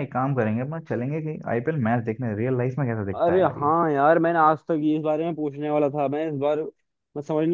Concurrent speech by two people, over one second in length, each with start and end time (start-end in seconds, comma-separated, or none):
none